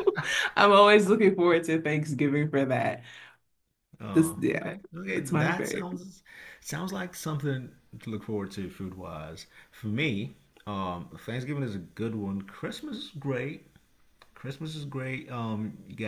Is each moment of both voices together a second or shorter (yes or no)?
no